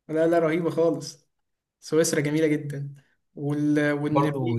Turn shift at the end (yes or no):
yes